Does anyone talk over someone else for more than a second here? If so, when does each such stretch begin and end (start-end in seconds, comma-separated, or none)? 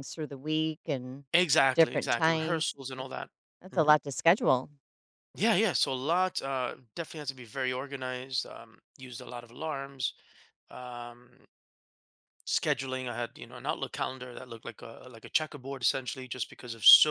1.8-3.1